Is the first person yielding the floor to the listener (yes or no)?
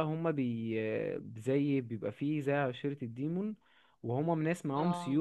no